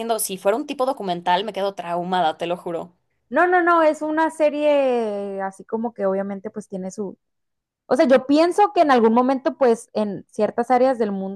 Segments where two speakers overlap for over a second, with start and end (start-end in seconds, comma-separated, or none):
none